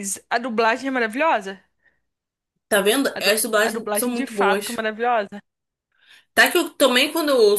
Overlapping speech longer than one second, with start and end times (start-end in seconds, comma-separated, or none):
3.1-4.8